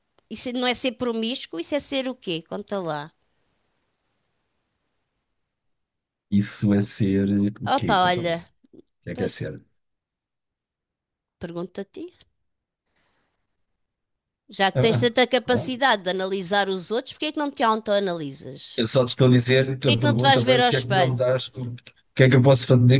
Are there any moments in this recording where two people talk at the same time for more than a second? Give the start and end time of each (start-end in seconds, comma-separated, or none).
19.8-21.2